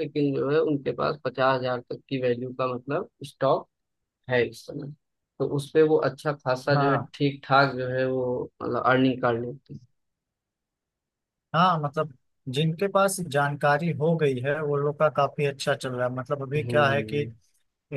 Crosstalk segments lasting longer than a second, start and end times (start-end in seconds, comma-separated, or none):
none